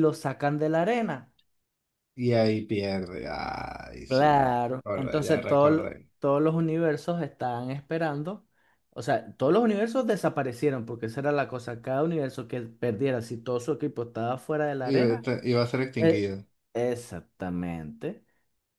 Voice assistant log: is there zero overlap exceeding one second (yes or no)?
no